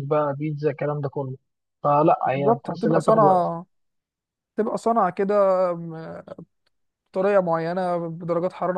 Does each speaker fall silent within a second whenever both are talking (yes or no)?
no